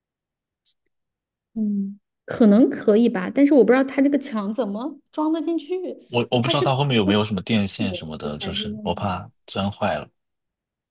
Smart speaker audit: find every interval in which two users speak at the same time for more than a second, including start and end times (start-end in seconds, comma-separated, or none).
7.8-9.1